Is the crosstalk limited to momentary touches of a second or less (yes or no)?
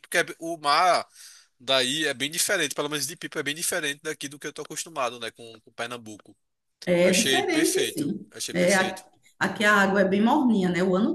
no